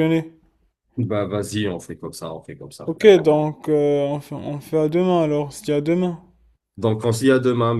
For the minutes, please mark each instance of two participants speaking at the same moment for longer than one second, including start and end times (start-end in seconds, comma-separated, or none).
none